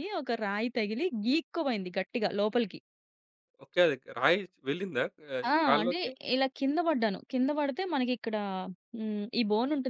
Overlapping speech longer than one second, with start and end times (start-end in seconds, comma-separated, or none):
none